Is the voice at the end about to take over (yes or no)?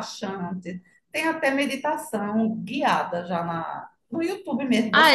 yes